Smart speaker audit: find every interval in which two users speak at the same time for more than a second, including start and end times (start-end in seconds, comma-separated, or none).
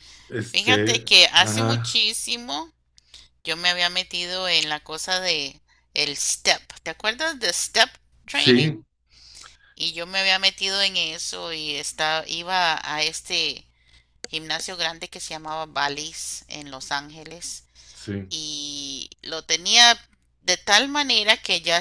0.5-2.0